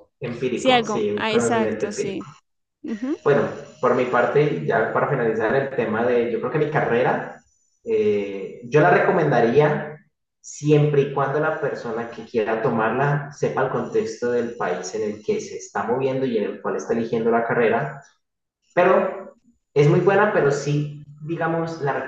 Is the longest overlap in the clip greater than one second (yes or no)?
yes